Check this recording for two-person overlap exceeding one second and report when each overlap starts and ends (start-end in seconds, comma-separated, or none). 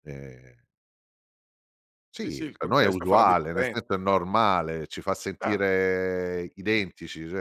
2.2-4.1